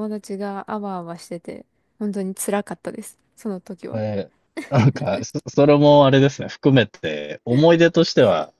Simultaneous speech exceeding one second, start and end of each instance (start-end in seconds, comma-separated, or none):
none